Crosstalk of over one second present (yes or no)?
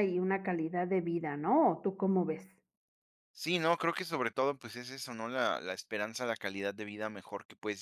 no